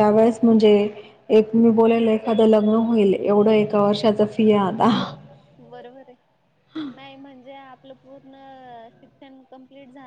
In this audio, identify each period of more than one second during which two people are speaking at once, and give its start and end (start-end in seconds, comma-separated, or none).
none